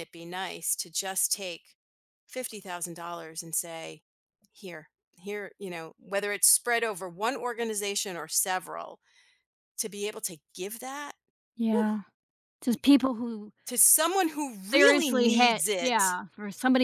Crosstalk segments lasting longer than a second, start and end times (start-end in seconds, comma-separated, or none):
14.7-16.2